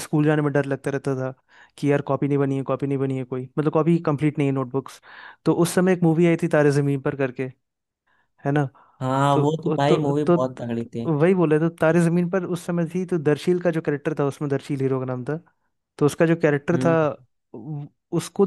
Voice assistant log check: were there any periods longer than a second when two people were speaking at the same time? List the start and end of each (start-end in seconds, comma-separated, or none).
9.3-11.1